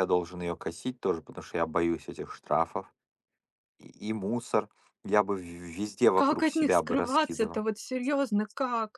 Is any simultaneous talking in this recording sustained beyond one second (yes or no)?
yes